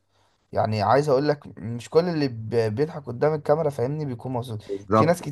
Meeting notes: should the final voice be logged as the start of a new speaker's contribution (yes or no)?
no